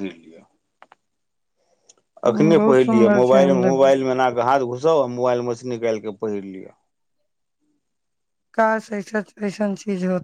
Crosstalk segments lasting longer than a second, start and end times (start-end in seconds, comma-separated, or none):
2.3-4.0